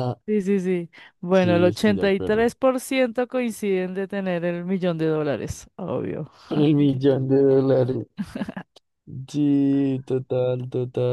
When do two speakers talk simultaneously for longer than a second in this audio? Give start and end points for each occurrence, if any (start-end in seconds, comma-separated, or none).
1.3-2.5